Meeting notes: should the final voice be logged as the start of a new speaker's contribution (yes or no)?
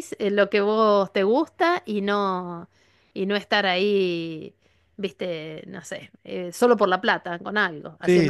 yes